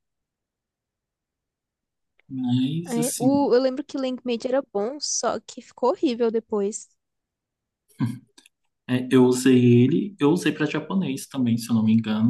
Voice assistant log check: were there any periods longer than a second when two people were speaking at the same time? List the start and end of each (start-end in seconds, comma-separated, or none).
none